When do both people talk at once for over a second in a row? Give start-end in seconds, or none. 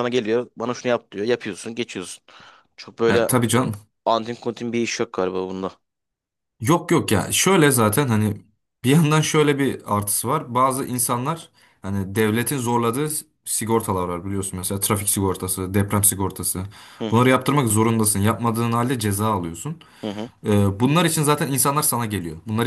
none